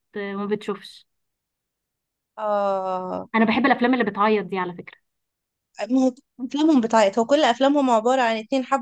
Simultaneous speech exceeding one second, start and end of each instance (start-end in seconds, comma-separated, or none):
none